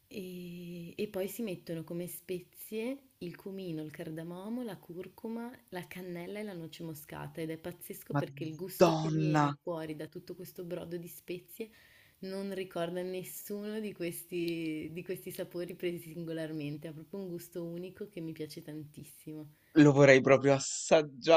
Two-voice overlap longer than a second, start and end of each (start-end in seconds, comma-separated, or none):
8.1-9.4